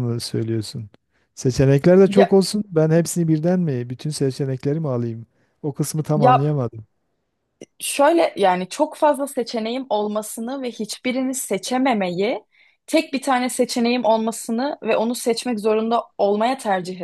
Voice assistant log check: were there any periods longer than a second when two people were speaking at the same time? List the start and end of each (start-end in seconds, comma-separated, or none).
none